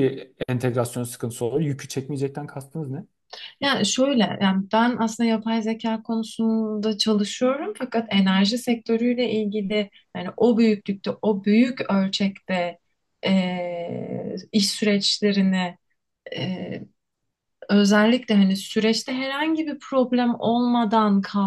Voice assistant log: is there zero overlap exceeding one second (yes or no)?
yes